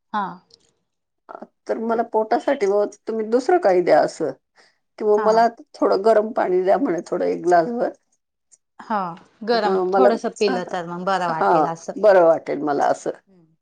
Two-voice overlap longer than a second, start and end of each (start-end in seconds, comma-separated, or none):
none